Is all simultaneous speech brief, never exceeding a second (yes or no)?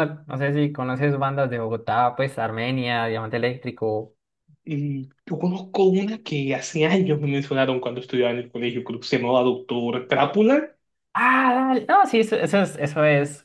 yes